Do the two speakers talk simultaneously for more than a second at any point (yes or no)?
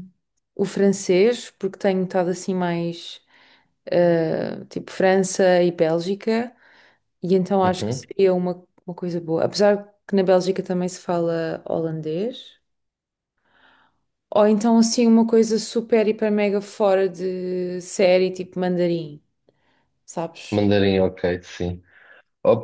no